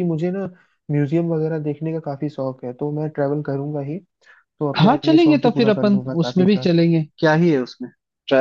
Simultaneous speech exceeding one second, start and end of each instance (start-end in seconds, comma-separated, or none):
4.8-6.7